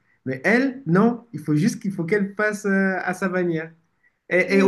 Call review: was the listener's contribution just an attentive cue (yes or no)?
yes